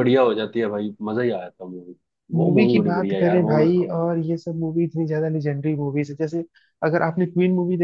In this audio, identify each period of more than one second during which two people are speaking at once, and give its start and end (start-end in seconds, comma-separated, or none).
2.4-3.9